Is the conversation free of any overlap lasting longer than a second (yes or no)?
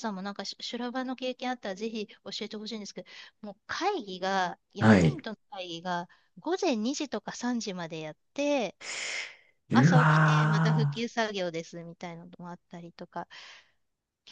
no